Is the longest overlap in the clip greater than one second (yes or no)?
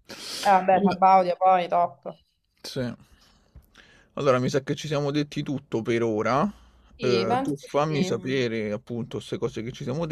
yes